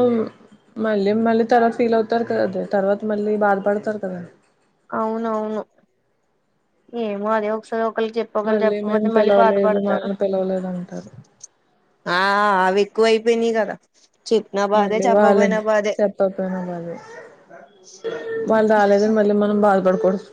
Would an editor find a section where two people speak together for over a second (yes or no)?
yes